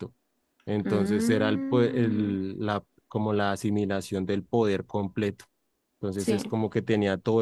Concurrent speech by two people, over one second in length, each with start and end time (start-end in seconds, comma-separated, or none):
0.8-2.3